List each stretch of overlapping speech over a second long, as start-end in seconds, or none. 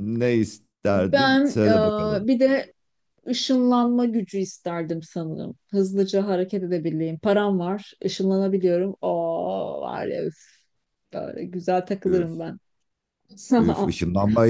0.9-2.3